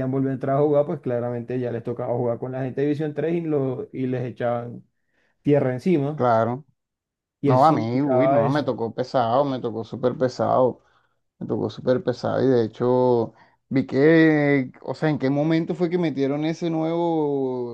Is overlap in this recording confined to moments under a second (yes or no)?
no